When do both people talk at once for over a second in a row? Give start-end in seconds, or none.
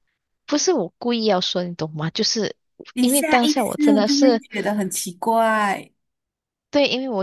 3.0-4.4